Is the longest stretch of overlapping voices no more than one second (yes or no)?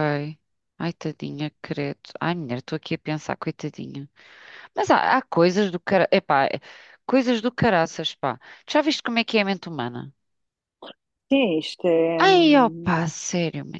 yes